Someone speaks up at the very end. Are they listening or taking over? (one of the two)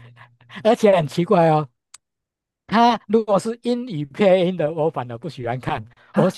listening